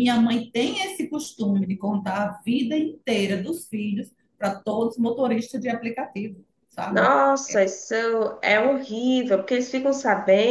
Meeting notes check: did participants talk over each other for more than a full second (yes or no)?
no